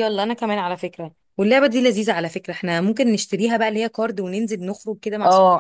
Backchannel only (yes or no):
no